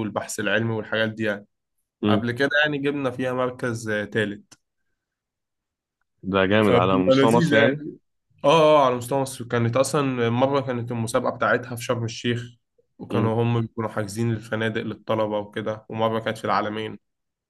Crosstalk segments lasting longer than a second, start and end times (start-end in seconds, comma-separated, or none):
6.6-7.8